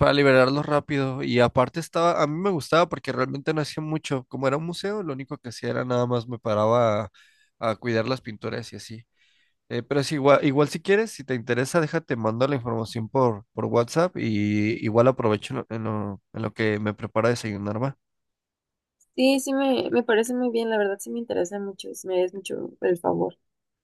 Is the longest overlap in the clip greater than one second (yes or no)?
no